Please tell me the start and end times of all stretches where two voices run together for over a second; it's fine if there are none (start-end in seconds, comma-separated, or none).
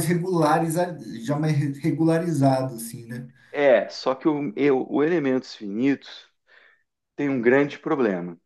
none